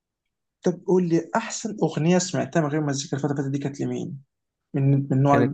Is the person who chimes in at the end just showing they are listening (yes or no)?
no